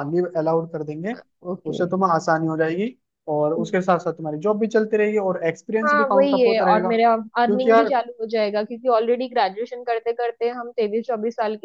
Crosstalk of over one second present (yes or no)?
yes